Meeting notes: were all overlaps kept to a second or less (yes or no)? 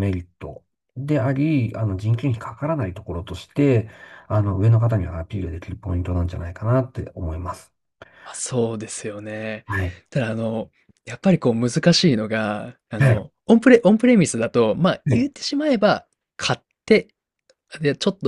yes